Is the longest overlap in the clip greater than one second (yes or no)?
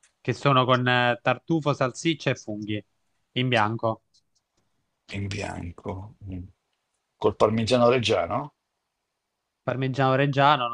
no